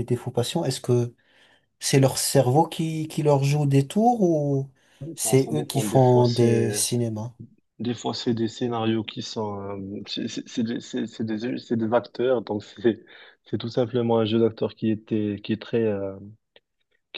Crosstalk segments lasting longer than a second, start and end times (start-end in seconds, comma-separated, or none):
5.2-6.8